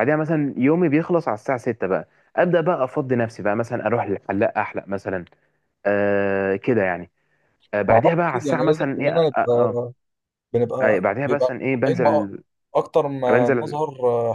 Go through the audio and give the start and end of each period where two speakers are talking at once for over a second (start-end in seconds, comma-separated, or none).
7.9-9.8, 10.8-12.3